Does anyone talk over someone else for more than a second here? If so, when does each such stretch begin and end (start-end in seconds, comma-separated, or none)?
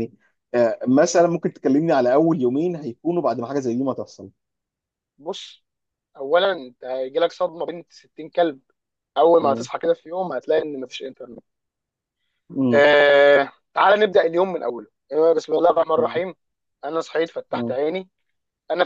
none